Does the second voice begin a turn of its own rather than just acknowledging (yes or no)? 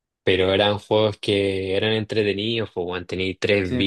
no